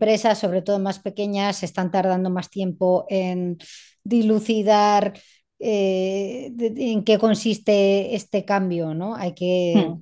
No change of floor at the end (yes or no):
yes